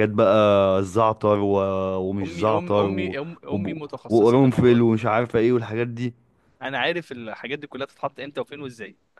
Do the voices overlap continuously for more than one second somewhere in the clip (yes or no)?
yes